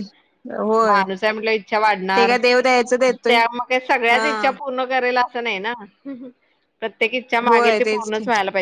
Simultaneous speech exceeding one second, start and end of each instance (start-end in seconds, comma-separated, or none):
none